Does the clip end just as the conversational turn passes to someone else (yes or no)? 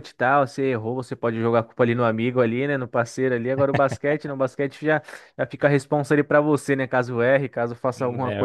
yes